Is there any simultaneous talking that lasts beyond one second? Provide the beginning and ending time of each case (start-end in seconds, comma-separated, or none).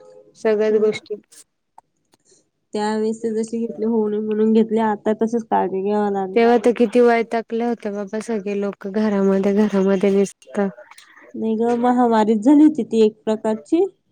none